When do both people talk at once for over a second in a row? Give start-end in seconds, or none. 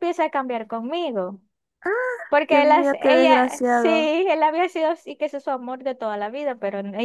2.5-4.1